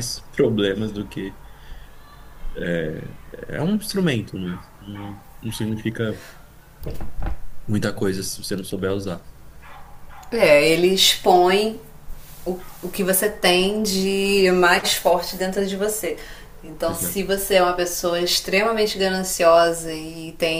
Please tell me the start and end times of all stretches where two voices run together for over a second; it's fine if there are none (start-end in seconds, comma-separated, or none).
none